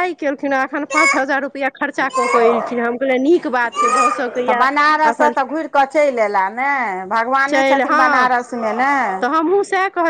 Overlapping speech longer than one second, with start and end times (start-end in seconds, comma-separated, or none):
none